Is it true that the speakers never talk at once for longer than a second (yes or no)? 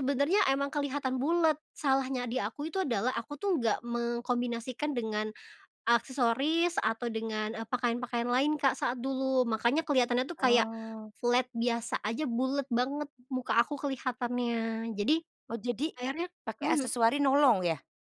yes